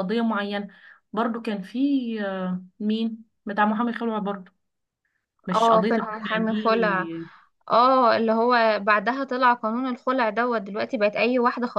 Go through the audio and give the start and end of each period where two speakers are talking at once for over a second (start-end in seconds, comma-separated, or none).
5.5-7.1